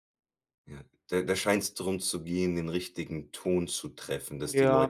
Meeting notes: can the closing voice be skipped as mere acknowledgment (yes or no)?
no